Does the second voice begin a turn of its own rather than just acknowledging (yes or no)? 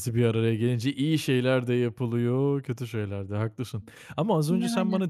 no